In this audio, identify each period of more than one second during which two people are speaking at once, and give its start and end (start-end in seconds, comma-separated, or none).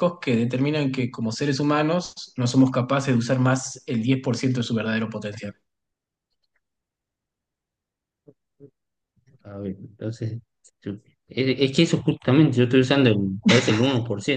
none